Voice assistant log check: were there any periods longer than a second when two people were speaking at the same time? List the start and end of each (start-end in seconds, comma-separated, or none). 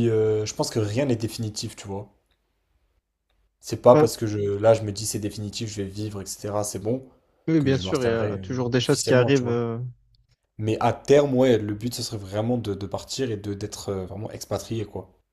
7.6-9.6